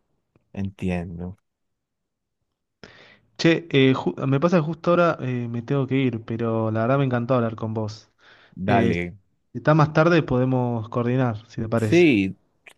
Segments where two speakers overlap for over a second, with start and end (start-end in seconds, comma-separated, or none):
none